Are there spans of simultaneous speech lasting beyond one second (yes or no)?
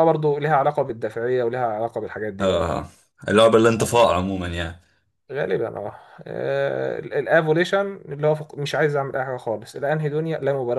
no